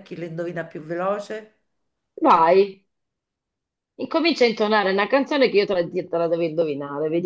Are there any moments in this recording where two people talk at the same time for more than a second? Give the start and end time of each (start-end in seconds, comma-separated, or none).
none